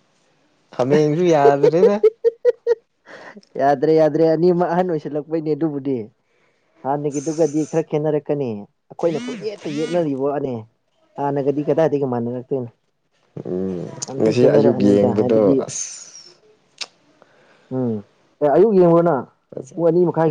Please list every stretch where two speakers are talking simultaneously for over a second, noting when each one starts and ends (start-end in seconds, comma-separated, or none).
14.1-15.6